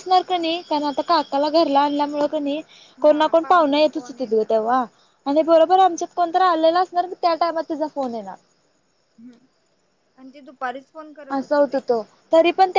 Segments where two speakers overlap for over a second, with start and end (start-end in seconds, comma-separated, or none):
3.0-4.5